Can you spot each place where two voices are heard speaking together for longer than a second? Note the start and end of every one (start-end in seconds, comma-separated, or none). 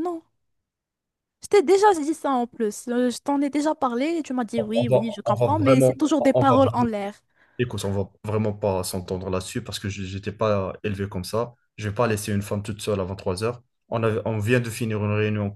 4.6-6.6